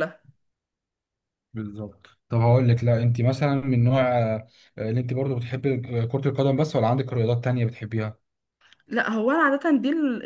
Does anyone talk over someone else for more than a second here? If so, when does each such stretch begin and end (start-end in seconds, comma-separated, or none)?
none